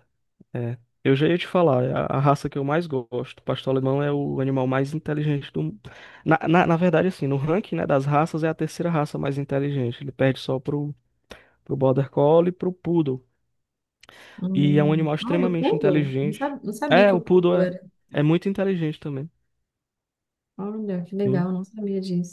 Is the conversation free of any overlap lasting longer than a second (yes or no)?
no